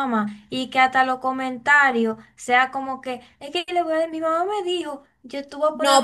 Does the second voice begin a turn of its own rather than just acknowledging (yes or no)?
yes